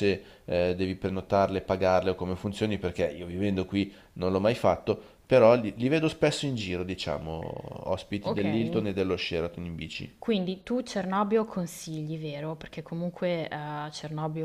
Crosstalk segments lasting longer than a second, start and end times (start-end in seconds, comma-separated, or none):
none